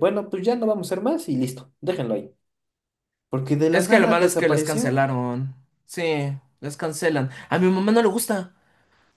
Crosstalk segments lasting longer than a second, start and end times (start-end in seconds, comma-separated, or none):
3.7-5.1